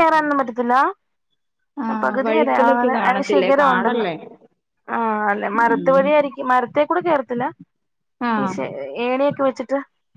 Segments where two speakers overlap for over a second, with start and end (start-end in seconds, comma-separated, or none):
2.2-4.1